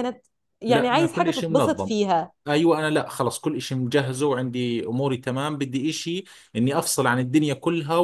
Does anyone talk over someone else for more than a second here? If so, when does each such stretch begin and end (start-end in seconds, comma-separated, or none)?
0.7-1.9